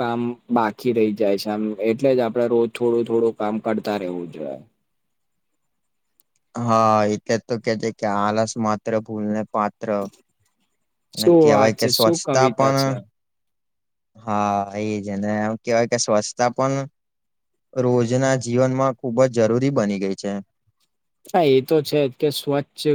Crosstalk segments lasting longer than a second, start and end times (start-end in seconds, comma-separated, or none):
11.1-12.9